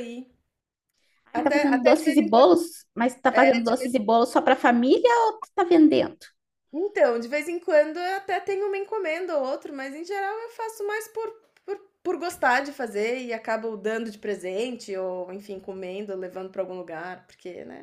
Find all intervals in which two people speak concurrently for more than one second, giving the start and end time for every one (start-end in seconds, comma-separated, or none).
1.3-2.5